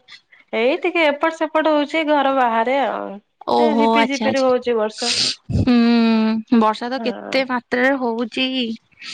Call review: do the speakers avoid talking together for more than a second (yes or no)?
no